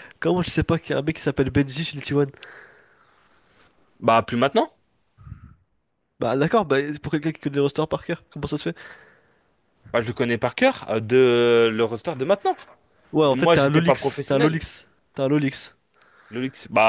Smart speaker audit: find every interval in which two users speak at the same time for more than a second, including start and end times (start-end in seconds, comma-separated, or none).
13.2-14.6